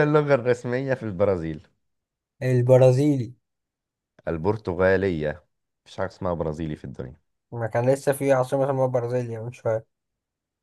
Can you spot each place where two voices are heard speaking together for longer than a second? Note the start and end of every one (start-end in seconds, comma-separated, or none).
none